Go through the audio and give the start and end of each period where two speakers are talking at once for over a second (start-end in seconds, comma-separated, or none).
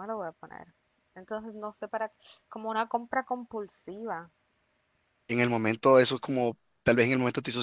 none